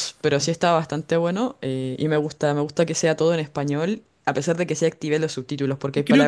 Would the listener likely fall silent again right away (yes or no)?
yes